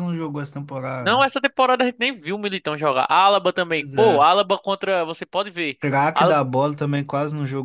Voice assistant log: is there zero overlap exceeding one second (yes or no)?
yes